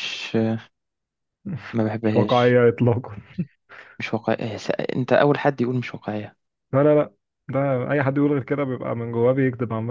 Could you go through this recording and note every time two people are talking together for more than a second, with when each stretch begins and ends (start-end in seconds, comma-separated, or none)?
none